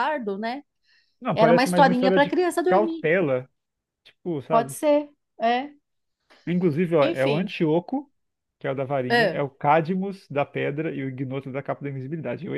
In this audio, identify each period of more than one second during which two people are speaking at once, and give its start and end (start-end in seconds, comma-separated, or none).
1.3-3.0